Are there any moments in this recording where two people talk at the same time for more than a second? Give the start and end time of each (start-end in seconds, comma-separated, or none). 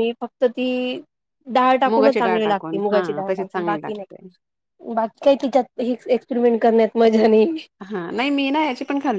1.9-4.1